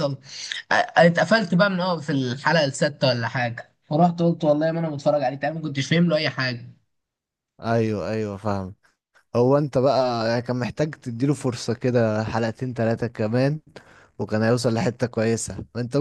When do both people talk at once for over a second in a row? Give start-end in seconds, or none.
none